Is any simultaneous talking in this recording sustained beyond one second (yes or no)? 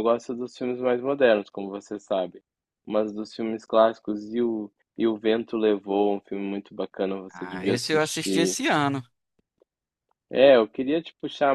yes